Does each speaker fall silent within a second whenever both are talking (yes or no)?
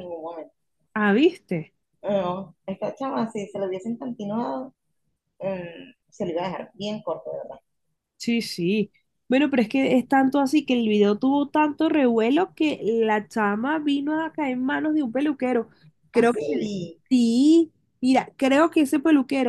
yes